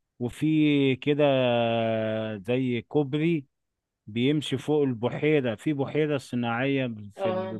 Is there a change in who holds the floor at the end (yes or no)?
no